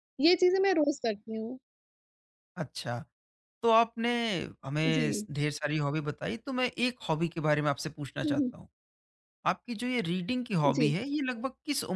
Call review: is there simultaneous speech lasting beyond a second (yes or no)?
no